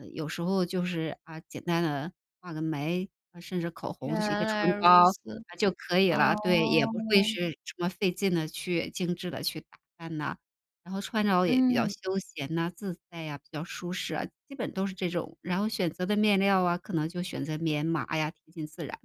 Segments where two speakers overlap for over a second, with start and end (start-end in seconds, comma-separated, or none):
4.0-5.4, 6.1-7.3